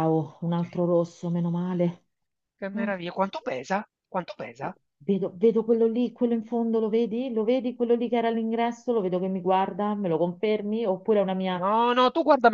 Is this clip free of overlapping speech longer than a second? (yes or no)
yes